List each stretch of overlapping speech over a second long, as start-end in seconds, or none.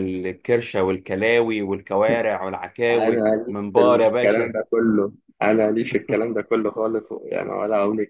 2.9-4.6